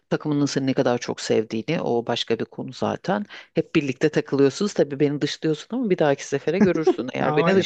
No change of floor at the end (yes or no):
no